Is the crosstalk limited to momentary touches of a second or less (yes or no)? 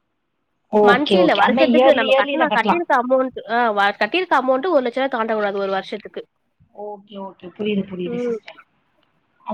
no